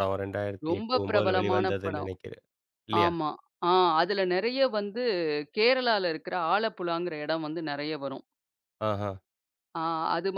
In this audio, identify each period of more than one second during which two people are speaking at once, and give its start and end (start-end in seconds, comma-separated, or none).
0.7-2.1